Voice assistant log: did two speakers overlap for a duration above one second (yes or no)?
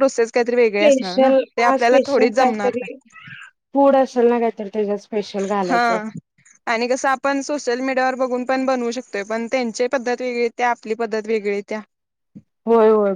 yes